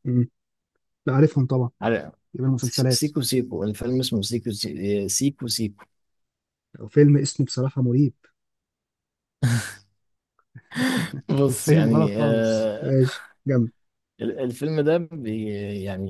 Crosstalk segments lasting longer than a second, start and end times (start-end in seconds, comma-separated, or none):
11.4-12.9